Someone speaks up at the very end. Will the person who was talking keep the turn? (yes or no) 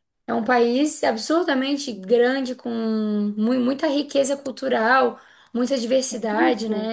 yes